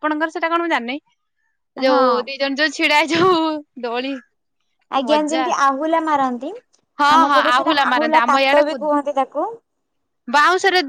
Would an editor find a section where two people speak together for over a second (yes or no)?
no